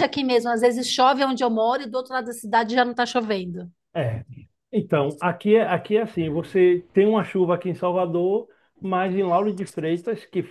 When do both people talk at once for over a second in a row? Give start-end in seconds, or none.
none